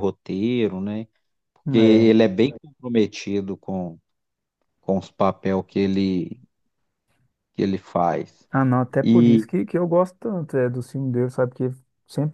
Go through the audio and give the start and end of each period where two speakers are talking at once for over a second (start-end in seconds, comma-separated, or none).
none